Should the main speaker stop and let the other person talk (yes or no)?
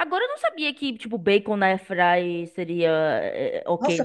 yes